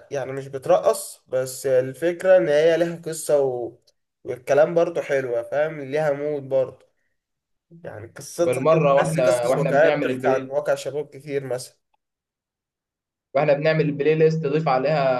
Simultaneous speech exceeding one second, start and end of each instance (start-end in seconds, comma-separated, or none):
8.4-10.6